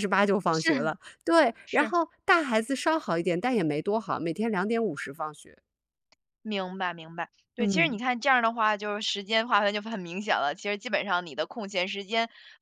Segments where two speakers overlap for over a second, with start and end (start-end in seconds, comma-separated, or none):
none